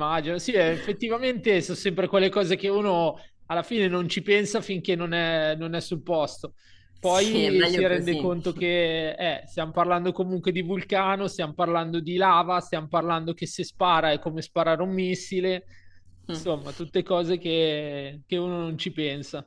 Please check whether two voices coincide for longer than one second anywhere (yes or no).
yes